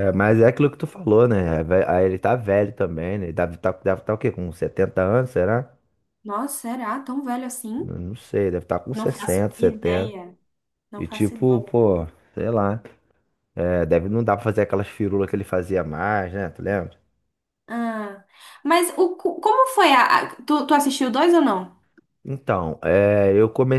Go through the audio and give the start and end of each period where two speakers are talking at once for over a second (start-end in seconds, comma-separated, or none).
8.9-10.1